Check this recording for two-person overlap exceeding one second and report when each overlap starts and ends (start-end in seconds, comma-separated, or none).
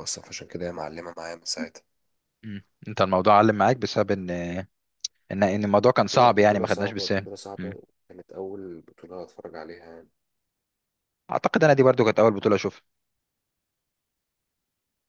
6.1-7.7